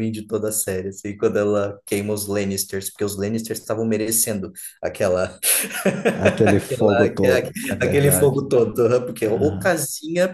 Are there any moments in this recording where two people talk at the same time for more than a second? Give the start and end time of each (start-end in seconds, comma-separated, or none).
6.4-8.4